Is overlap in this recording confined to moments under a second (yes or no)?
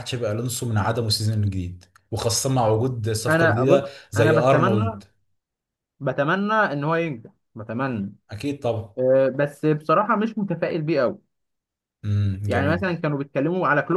no